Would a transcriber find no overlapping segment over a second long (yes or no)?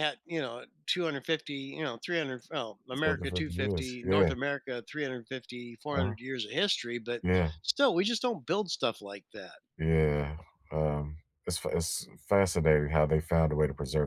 no